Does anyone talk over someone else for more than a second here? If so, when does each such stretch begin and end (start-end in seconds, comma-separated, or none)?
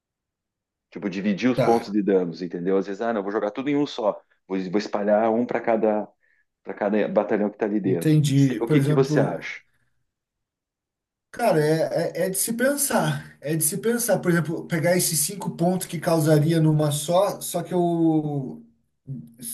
7.8-9.5